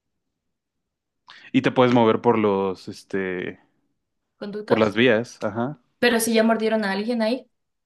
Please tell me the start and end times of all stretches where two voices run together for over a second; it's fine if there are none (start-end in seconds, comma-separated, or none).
none